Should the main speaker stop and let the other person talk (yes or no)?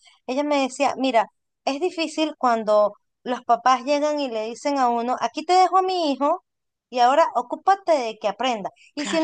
no